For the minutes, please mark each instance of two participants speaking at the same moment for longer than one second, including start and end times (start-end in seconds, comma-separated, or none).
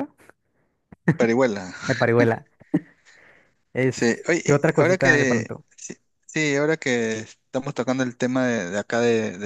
3.9-5.6